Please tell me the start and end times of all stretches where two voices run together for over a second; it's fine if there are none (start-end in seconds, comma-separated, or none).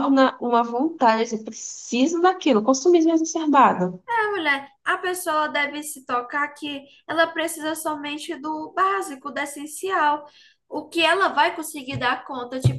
none